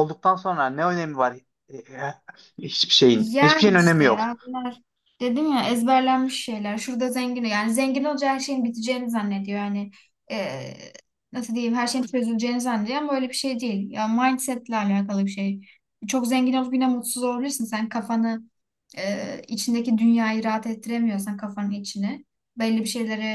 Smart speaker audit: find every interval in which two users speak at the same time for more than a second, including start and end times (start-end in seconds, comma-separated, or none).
3.1-4.3